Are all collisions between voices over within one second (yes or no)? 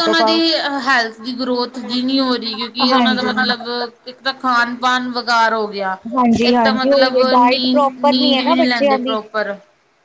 no